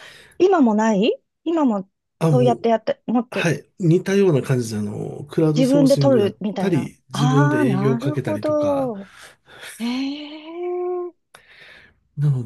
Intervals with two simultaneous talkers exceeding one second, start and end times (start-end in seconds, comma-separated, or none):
5.5-8.9